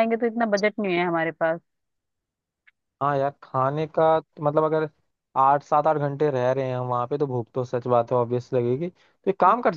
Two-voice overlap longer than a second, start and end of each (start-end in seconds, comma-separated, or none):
none